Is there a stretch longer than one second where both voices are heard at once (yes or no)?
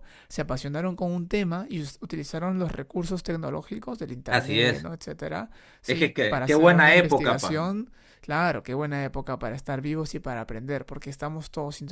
yes